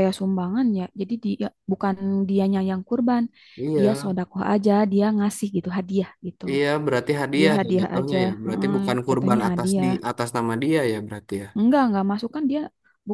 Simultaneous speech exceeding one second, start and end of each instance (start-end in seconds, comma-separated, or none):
7.4-9.9